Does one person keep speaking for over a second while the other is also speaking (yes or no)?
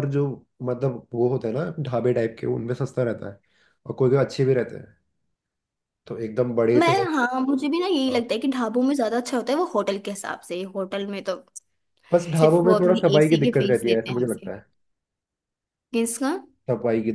yes